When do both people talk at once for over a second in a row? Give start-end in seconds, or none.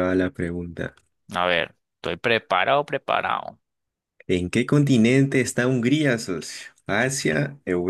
none